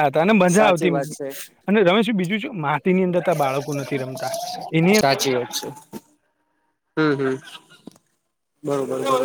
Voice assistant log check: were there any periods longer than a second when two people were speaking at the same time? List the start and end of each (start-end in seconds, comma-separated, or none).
none